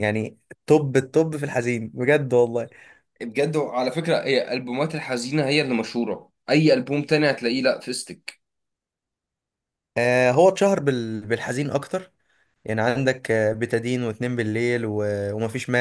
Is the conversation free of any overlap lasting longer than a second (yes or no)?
yes